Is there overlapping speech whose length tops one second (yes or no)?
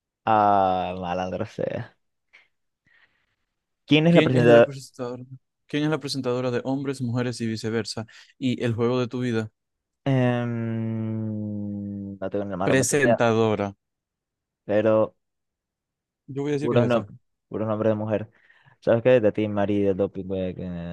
no